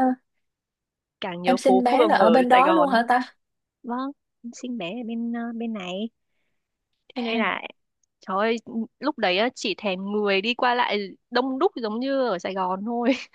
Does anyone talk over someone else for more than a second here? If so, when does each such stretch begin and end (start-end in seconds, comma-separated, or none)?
1.4-2.9